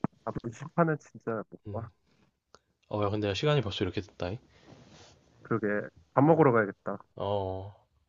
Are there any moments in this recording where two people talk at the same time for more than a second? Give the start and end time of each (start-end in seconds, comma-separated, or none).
none